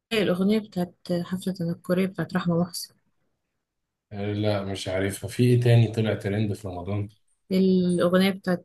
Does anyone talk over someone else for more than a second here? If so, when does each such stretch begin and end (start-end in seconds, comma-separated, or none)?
none